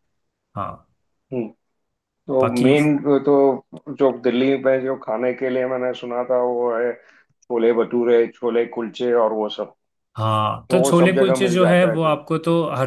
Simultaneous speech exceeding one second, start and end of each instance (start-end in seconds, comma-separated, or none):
10.7-12.2